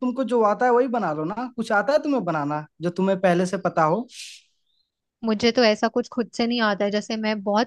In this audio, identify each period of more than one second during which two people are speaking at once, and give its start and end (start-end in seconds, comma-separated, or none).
none